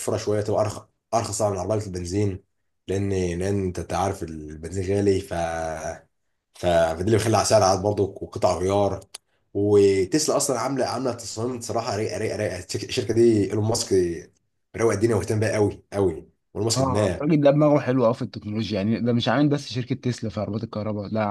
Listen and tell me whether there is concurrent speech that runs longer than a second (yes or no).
no